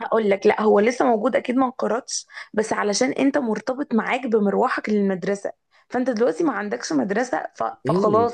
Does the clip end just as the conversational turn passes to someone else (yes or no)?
yes